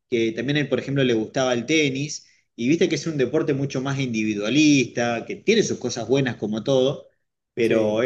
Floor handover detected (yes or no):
no